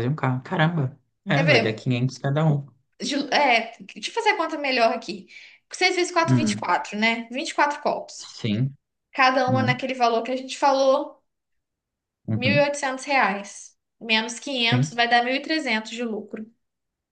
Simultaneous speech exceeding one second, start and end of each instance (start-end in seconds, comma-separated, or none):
none